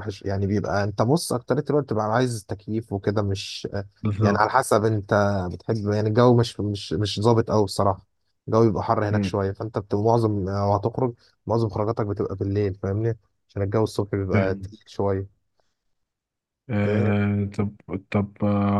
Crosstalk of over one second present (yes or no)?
no